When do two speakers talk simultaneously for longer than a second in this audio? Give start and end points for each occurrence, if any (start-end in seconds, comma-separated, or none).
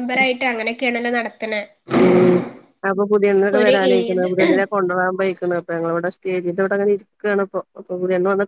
none